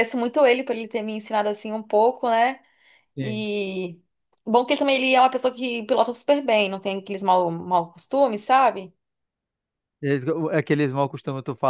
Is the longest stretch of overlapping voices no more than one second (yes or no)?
yes